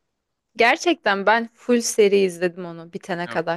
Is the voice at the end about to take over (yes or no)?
yes